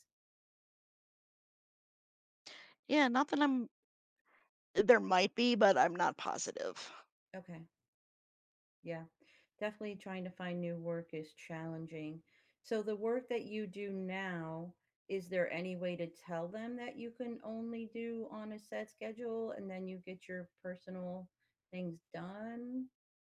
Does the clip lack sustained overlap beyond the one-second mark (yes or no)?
yes